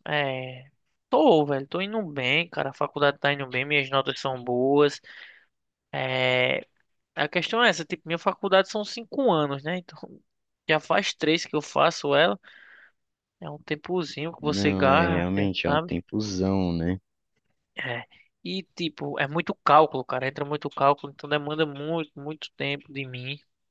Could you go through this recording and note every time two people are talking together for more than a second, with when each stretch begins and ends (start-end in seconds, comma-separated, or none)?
14.4-15.9